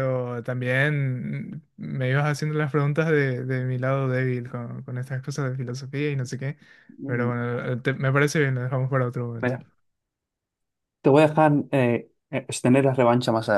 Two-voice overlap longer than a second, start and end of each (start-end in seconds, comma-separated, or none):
none